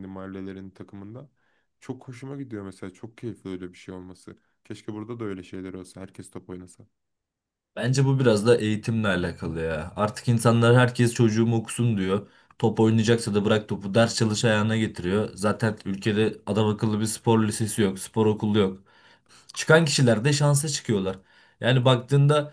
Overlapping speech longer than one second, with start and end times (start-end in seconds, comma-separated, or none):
none